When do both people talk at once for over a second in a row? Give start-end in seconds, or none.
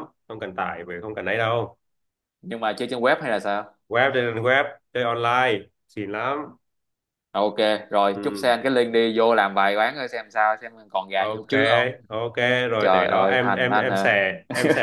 12.8-14.1